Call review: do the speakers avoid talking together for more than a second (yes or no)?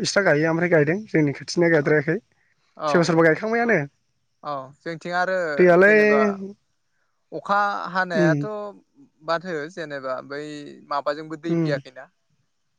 yes